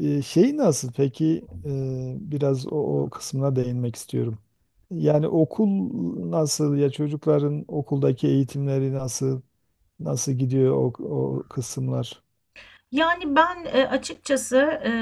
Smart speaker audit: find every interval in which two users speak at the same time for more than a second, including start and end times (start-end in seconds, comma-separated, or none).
none